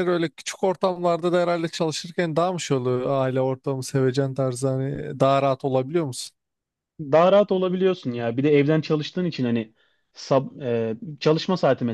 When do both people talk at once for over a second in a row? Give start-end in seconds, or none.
none